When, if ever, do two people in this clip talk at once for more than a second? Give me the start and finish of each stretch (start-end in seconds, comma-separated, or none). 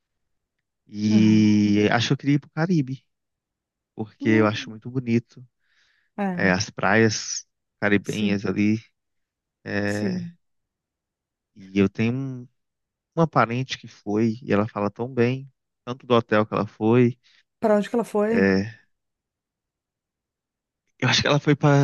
none